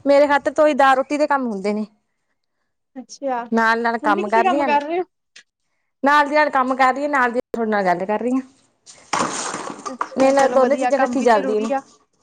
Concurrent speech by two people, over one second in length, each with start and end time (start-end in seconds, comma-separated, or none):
10.2-11.7